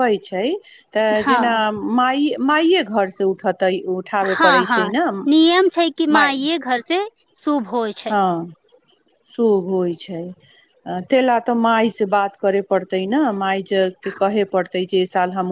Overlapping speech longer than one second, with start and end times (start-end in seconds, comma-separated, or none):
none